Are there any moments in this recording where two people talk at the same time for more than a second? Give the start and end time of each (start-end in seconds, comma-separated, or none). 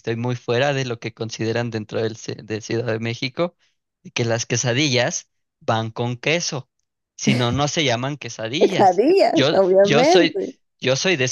8.6-10.4